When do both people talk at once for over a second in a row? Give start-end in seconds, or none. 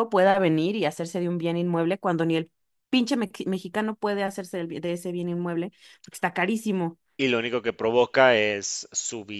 none